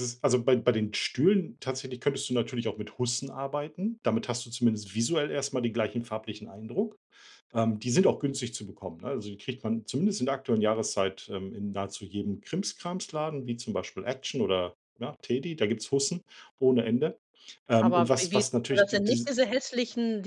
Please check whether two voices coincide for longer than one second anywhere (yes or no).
yes